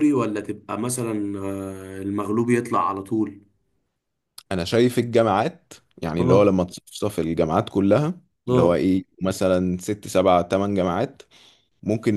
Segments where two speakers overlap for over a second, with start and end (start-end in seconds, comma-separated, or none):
none